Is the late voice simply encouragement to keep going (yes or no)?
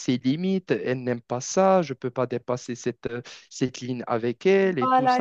no